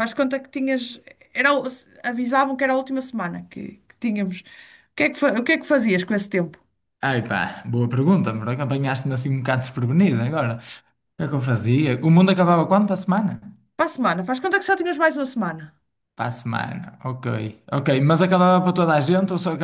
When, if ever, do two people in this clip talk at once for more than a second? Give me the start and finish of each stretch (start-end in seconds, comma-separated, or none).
none